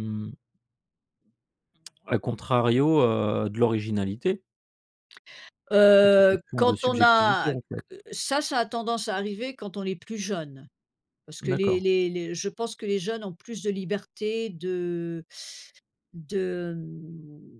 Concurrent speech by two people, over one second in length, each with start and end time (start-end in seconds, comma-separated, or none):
6.0-7.5